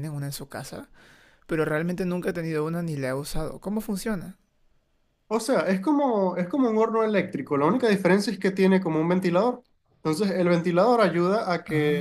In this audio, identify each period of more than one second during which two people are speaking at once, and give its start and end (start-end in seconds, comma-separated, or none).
none